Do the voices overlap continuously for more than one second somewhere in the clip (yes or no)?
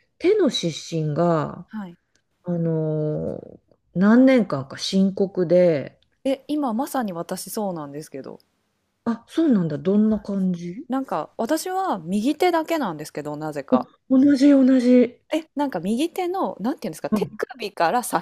no